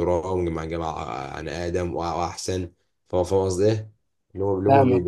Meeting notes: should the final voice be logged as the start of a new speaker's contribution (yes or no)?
no